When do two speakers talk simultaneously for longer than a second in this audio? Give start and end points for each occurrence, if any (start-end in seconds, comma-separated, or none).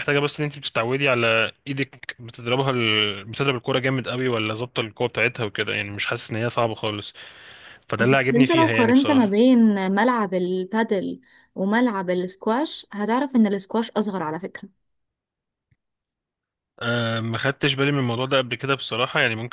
8.0-9.4